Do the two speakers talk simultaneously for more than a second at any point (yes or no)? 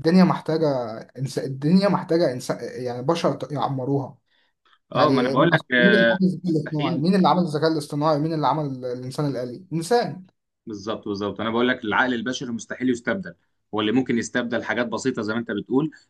yes